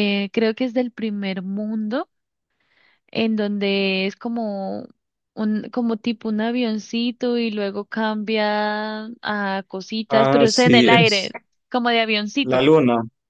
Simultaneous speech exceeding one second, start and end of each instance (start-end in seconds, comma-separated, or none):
10.1-11.3